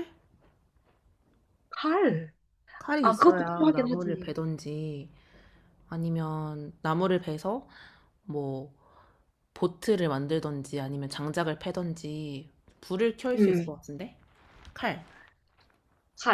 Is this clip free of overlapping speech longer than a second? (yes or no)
no